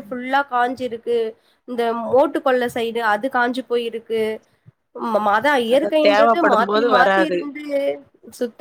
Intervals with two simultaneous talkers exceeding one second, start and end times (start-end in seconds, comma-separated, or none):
5.7-7.4